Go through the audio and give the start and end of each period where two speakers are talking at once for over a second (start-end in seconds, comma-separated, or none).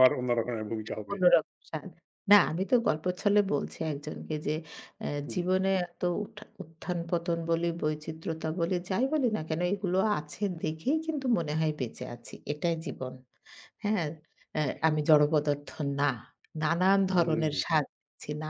none